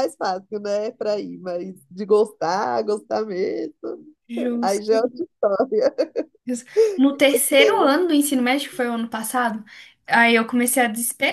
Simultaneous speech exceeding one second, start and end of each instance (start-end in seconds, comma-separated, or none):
none